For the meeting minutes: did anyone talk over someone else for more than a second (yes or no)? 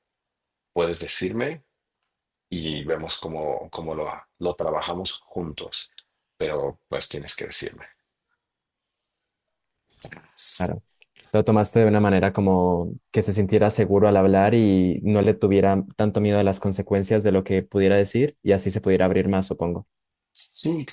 no